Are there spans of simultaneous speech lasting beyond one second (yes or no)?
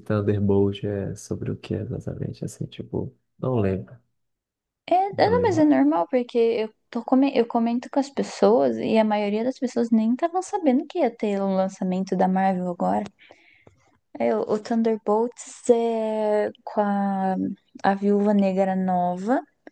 no